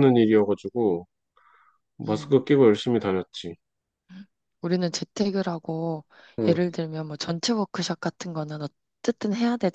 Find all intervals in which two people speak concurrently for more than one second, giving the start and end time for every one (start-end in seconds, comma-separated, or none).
none